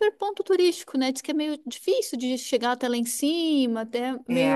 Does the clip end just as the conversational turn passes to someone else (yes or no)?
no